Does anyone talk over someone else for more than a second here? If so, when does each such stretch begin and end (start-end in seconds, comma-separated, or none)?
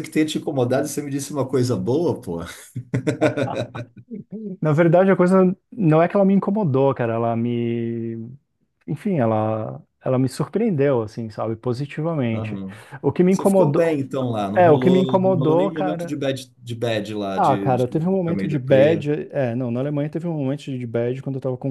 14.5-16.2, 17.4-19.1